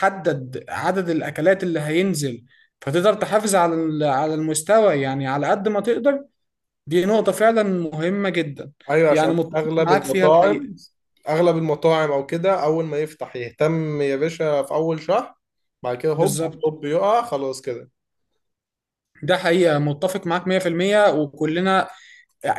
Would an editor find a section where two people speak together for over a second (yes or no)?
yes